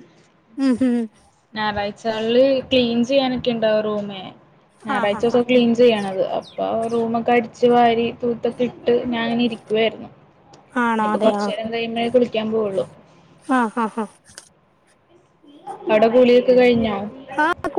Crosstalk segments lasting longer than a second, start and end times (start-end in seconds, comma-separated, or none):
none